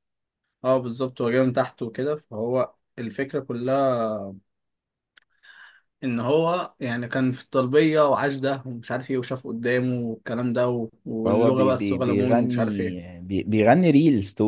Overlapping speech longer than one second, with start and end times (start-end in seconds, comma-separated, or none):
11.2-12.8